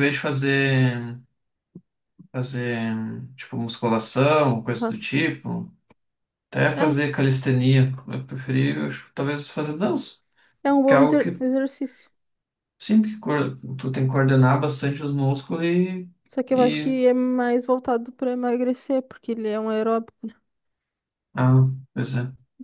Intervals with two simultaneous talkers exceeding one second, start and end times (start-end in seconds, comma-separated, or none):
none